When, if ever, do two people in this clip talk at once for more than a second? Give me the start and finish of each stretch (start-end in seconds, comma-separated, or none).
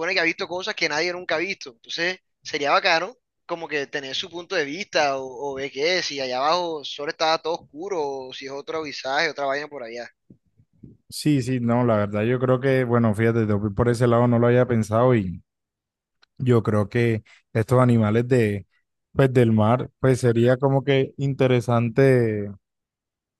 none